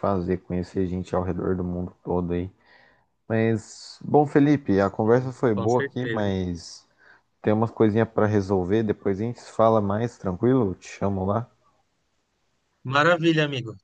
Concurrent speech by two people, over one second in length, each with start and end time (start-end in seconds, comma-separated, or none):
5.0-6.3